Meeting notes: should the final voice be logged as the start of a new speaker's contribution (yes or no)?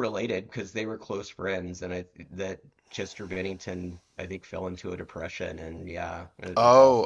yes